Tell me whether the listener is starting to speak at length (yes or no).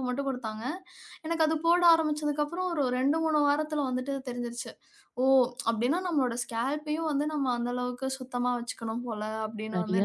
yes